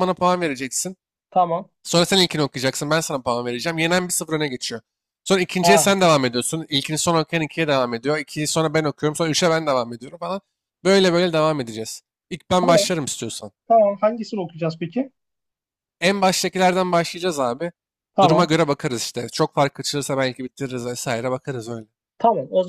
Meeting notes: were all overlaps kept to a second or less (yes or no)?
yes